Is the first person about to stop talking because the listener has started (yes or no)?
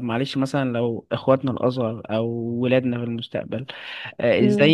no